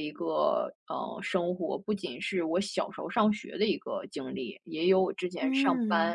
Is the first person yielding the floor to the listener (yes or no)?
no